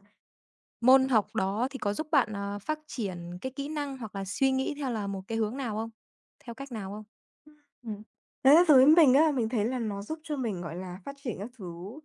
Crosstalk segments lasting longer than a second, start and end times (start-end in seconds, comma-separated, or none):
none